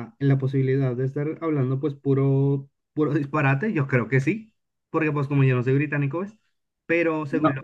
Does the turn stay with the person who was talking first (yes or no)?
yes